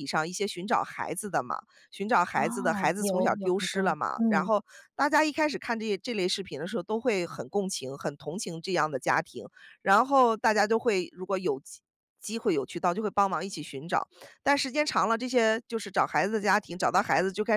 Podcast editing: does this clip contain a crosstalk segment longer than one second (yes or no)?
yes